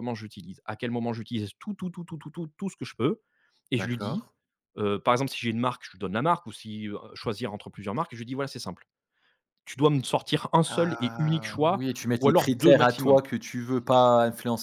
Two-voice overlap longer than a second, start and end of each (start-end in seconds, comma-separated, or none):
10.7-13.2